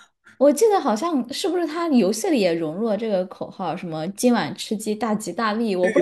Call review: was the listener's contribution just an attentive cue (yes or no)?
no